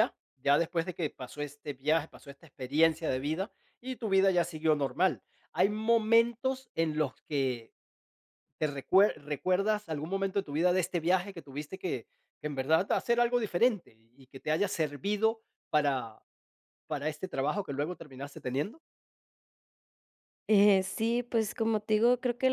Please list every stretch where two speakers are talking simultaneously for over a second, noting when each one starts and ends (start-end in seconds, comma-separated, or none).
none